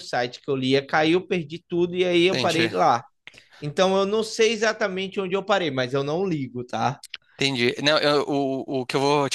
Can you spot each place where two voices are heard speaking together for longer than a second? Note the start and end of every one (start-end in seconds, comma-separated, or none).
none